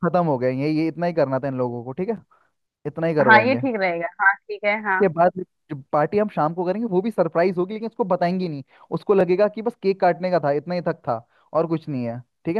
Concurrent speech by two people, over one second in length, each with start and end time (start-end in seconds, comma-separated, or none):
none